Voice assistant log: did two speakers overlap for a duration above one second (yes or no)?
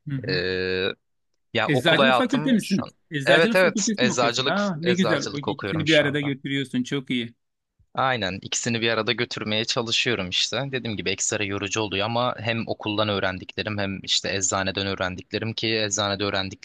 yes